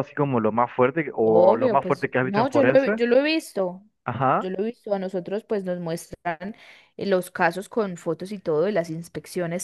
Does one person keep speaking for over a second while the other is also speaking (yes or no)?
yes